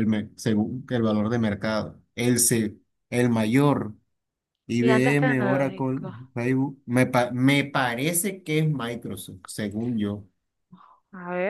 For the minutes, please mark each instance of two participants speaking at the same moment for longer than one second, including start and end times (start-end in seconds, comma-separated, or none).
4.8-6.2